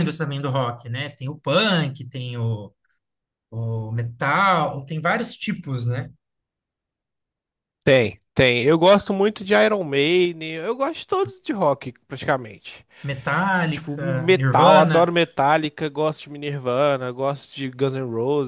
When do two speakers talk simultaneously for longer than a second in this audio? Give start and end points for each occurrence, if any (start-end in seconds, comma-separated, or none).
13.7-15.1